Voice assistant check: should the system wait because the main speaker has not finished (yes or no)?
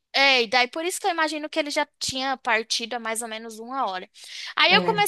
yes